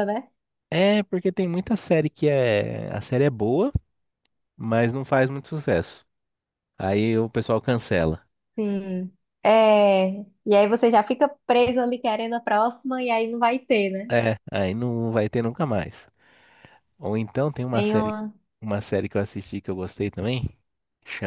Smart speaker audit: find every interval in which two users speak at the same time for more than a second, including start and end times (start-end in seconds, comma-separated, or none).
none